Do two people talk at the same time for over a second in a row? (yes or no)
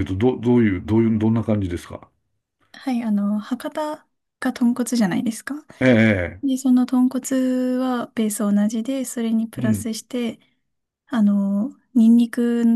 no